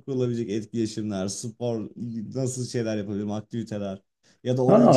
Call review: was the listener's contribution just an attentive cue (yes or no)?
no